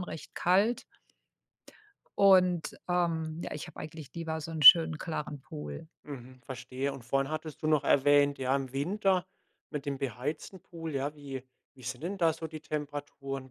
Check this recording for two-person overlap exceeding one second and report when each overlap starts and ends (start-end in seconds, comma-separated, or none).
none